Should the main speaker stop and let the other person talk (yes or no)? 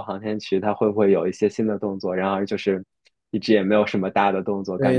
yes